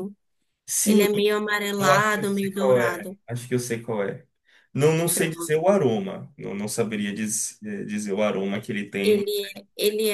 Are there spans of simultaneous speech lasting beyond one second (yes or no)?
yes